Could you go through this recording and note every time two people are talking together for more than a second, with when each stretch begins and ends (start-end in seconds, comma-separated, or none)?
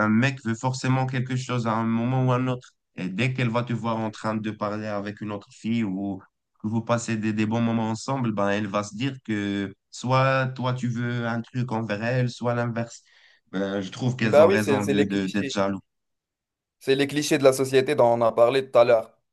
14.2-15.5